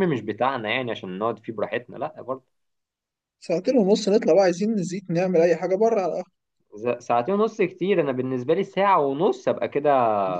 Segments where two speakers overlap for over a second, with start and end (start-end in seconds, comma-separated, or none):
none